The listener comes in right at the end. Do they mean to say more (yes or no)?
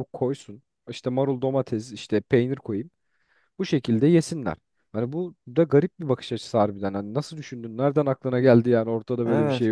yes